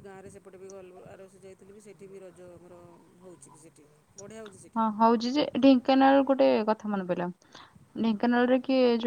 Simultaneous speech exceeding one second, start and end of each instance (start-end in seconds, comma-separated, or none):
none